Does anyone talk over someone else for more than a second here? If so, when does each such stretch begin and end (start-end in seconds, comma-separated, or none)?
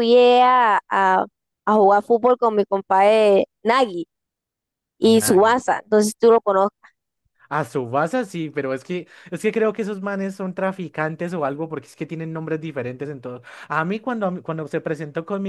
none